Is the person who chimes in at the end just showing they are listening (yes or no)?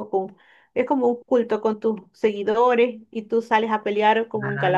yes